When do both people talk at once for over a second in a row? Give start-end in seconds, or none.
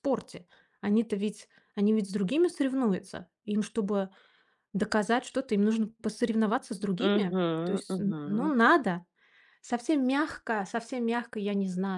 7.0-8.5